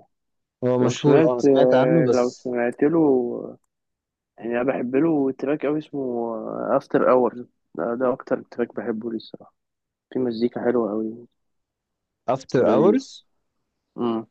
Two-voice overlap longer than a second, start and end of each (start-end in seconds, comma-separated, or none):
0.8-2.5